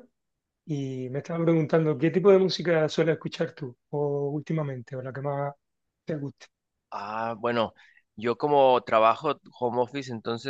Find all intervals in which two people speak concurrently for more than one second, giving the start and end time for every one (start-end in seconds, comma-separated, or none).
none